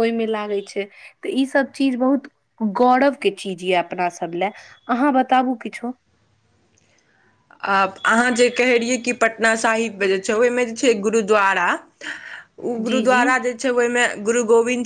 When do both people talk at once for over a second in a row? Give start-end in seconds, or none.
none